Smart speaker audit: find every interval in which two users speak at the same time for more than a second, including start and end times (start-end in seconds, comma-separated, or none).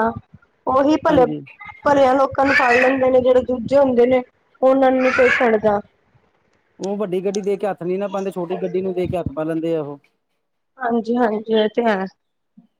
none